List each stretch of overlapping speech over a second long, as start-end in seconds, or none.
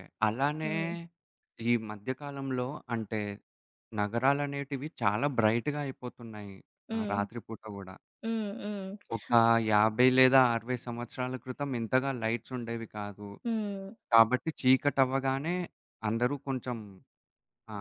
none